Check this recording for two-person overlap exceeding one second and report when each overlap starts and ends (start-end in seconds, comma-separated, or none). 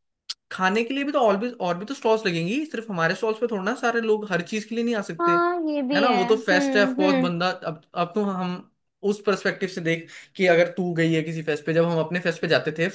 5.9-7.3